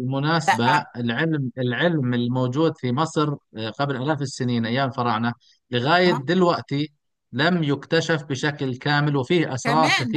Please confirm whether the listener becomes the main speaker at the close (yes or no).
yes